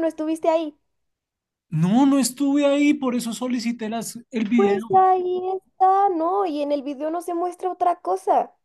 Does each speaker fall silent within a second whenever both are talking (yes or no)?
yes